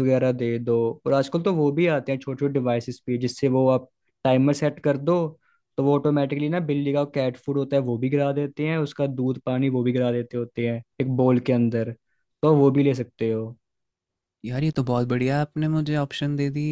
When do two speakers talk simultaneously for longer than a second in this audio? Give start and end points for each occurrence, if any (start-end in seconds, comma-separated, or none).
none